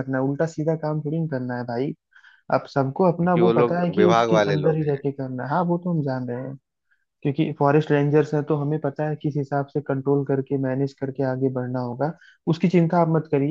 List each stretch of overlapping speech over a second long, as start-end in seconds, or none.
3.2-5.0